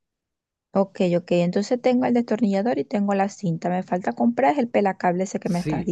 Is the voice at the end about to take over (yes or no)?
yes